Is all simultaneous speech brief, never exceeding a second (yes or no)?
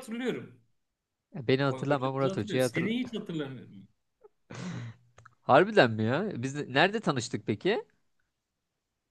no